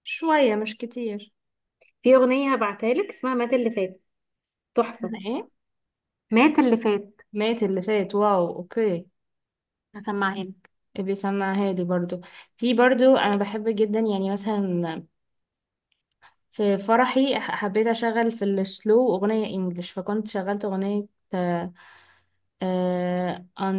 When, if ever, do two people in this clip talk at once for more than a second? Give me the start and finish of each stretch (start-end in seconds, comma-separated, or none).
none